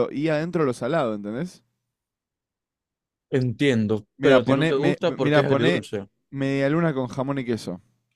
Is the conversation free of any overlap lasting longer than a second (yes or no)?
no